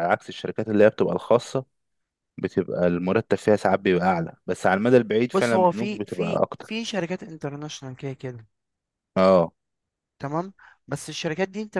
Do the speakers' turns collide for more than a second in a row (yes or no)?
yes